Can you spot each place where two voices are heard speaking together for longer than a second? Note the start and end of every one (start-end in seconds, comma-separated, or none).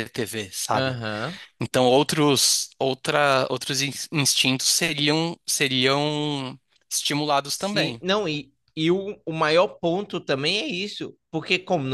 none